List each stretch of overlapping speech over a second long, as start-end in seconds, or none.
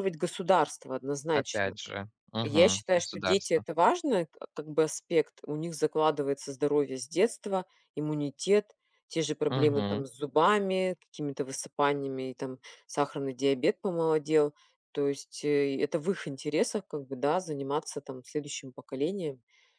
2.4-3.6